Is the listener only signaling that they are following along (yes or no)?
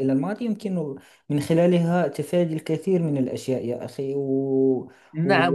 no